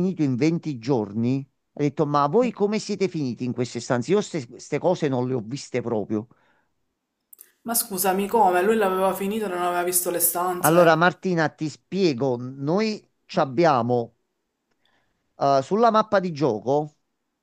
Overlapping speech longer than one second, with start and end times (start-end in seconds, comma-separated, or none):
none